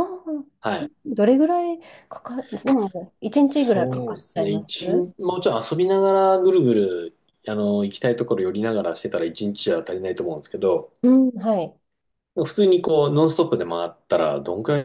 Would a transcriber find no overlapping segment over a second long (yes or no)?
no